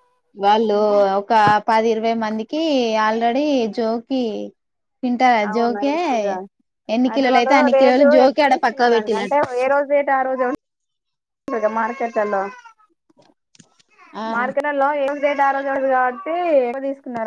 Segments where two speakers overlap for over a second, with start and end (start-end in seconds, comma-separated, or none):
7.1-9.3